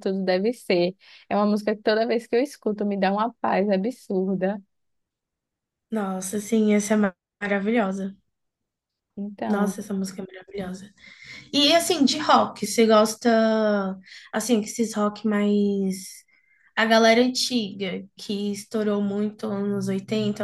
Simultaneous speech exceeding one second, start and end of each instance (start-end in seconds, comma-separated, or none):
none